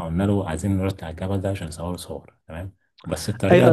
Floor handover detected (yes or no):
yes